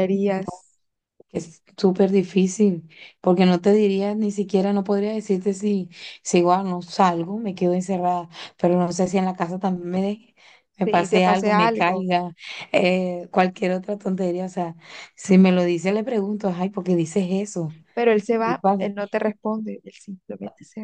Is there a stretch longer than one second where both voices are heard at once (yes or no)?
yes